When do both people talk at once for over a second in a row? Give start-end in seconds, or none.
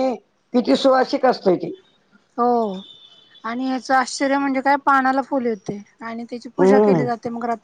none